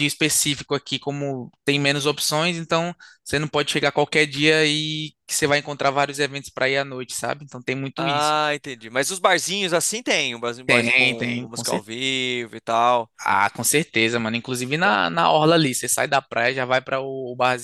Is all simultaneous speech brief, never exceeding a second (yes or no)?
no